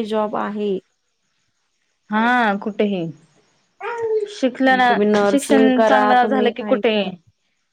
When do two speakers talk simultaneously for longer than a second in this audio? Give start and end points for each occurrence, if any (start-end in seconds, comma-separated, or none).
5.3-6.9